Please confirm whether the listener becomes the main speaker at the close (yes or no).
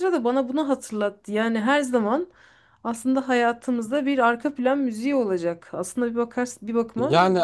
yes